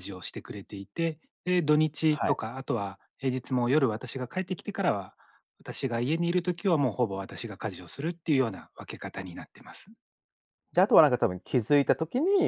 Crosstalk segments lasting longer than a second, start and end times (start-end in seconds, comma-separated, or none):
none